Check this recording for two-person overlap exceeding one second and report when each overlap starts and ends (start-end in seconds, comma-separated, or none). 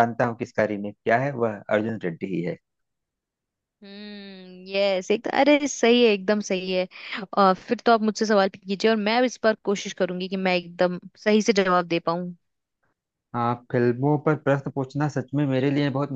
none